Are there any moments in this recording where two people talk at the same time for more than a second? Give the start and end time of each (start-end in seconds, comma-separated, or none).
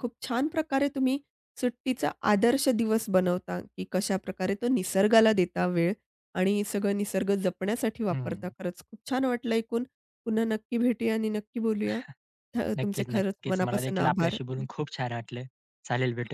12.8-14.4